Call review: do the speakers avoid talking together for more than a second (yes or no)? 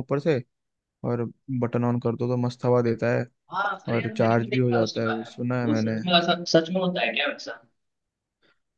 no